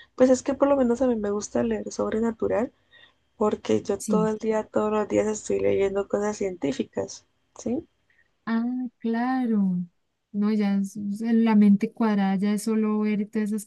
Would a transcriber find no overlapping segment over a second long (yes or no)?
yes